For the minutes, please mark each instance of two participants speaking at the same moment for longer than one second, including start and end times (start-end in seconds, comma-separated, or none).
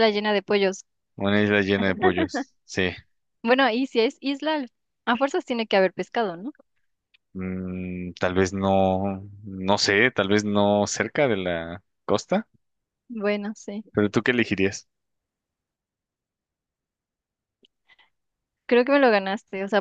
none